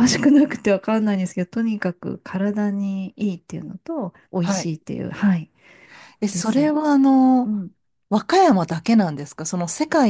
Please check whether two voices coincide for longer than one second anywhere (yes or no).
no